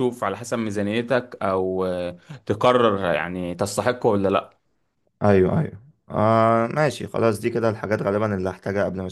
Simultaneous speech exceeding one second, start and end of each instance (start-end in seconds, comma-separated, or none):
none